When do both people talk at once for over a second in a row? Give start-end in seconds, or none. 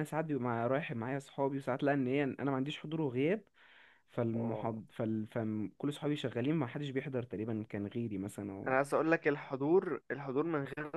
none